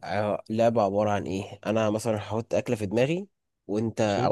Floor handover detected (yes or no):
no